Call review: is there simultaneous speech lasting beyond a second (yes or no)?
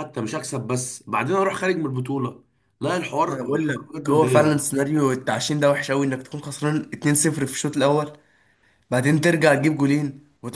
yes